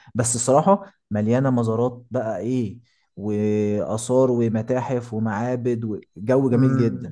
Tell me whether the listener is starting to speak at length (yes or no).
yes